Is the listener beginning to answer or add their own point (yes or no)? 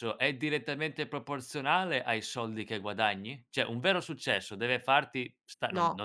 no